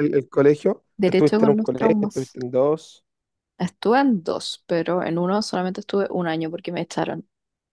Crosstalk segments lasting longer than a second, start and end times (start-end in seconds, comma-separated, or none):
1.0-2.4